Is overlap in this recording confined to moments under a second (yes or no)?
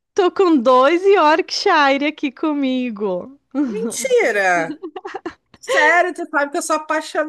yes